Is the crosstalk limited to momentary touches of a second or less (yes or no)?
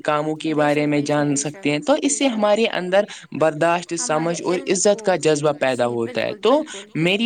no